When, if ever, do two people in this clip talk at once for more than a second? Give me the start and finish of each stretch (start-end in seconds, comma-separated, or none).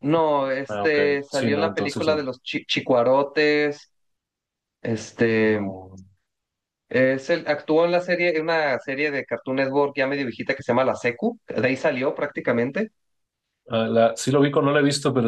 0.7-2.3